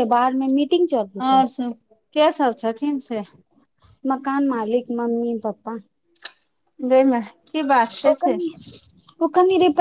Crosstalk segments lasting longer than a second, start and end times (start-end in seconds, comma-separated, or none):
none